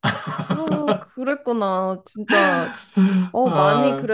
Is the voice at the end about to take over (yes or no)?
no